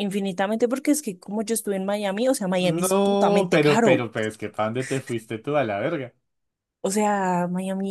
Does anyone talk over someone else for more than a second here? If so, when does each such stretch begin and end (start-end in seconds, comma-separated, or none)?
2.6-4.1